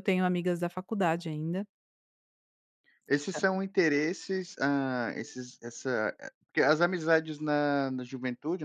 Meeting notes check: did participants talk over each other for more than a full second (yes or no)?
no